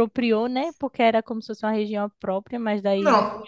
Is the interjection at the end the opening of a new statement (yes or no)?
no